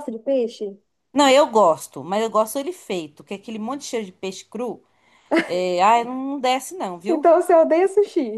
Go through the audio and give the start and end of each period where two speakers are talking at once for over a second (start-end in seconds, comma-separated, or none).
none